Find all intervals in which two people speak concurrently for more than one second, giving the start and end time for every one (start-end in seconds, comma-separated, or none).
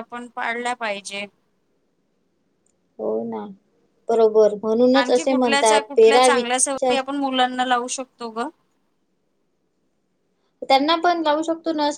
5.0-7.0